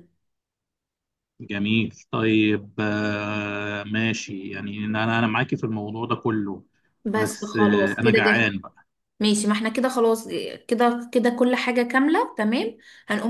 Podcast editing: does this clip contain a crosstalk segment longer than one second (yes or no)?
yes